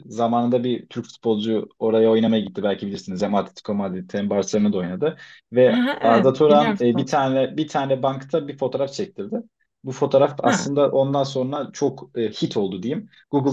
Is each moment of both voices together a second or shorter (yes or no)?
no